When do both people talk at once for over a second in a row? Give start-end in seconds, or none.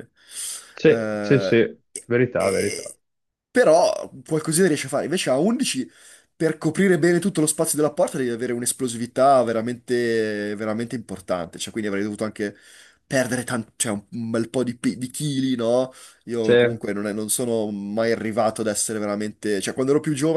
0.8-2.9